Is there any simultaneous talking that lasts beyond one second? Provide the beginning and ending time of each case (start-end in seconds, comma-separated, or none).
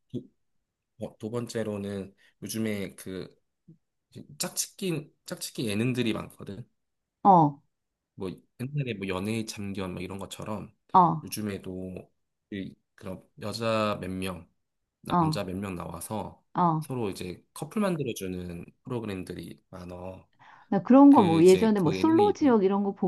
21.1-22.6